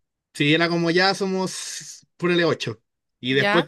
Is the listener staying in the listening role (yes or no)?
yes